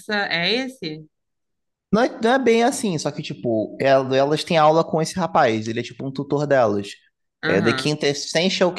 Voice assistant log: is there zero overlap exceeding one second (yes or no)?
yes